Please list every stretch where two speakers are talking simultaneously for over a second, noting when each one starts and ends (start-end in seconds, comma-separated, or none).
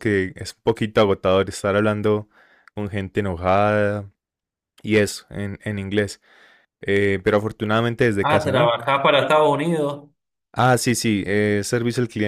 none